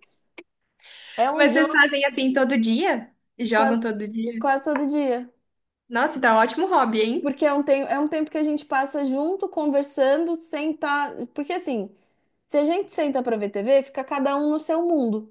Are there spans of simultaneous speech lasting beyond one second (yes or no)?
no